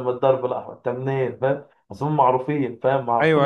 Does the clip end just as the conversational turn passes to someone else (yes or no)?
yes